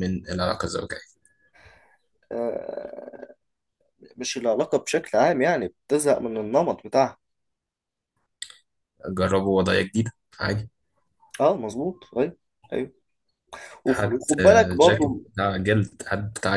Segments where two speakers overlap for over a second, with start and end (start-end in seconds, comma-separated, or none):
13.9-15.2